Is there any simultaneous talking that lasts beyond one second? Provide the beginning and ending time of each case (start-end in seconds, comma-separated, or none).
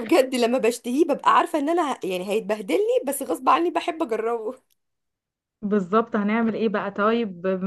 none